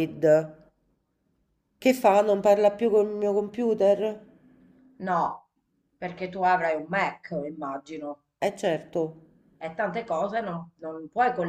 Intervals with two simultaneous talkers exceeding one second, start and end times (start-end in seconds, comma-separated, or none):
none